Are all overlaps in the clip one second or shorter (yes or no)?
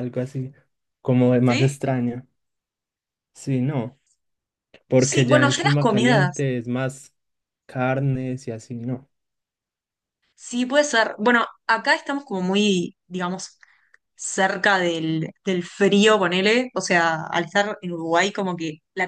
no